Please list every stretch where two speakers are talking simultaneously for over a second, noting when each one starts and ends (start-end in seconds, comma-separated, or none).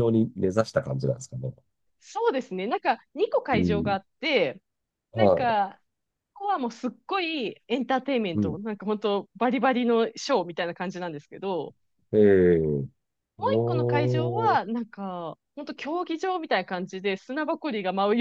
13.4-14.6